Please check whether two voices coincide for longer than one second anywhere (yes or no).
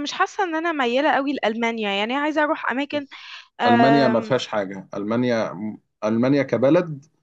no